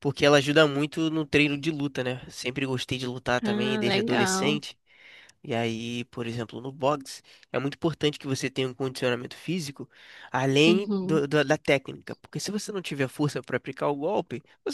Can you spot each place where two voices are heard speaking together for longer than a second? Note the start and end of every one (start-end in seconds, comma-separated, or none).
3.4-4.6